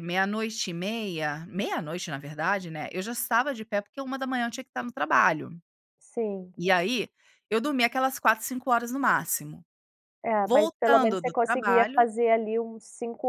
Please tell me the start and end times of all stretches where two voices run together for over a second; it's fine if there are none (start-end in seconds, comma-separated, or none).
10.4-12.0